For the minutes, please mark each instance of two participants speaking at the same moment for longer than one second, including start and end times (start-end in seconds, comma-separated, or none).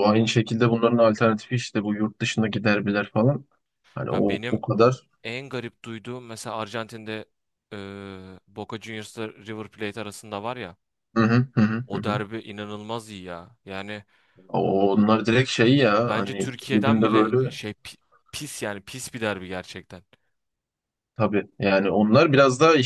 16.1-17.6